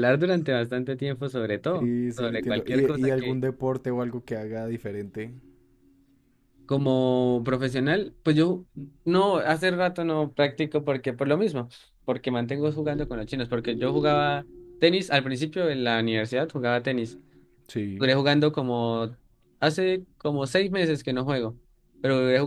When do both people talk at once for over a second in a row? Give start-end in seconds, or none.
1.8-3.1